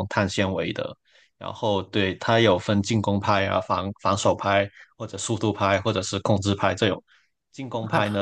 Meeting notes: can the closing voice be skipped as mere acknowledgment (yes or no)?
yes